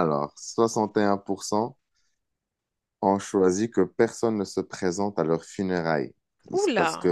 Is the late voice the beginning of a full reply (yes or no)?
no